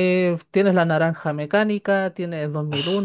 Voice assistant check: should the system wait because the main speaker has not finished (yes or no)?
yes